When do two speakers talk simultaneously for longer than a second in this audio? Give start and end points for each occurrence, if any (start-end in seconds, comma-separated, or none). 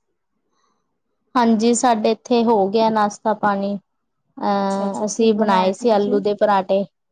4.7-6.2